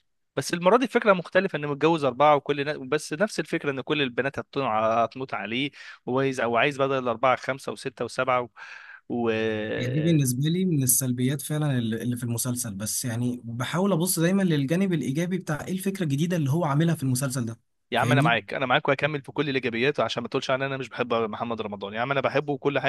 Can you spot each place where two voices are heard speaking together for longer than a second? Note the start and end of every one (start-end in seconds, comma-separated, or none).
none